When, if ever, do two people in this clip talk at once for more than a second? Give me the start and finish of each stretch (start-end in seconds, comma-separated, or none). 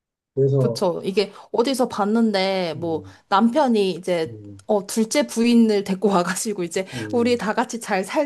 none